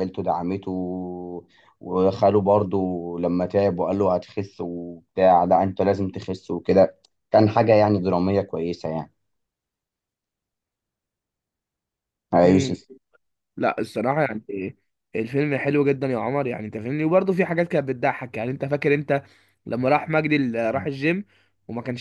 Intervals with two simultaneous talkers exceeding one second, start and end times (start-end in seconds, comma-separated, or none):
none